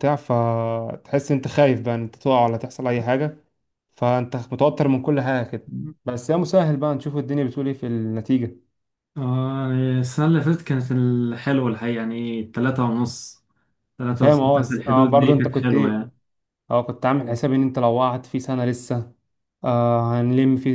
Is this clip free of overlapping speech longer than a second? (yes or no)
no